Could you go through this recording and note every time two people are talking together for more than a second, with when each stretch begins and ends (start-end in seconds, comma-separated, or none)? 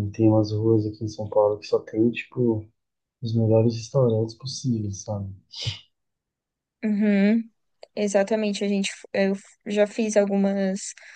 none